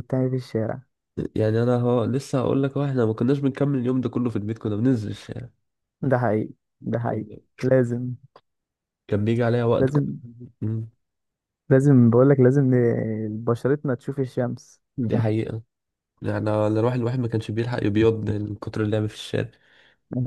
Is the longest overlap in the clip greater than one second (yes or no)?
no